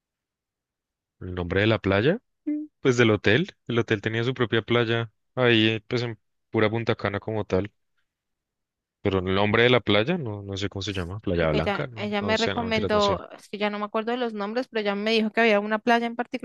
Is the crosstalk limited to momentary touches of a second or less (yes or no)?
no